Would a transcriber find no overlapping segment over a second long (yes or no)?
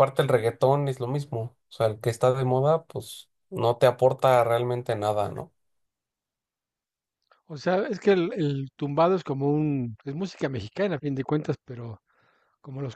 yes